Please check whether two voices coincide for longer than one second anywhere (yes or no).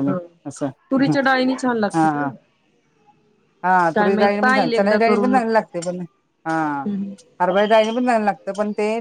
yes